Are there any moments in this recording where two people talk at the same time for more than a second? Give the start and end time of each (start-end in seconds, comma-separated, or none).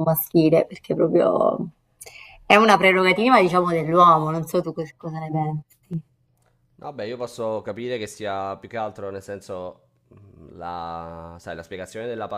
none